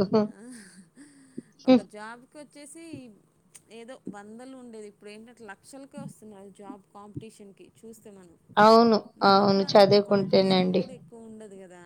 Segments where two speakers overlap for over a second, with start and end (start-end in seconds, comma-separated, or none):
9.2-10.8